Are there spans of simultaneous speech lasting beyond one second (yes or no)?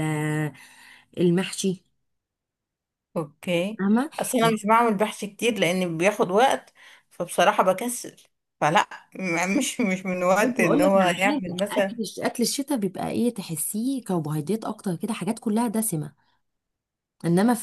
yes